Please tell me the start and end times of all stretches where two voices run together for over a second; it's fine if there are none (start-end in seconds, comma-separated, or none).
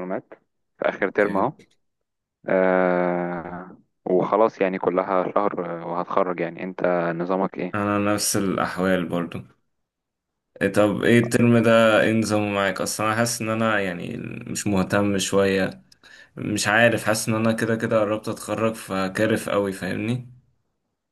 none